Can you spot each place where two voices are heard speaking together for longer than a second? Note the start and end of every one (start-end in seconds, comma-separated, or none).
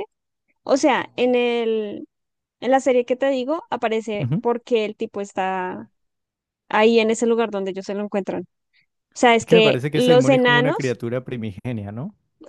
9.4-11.0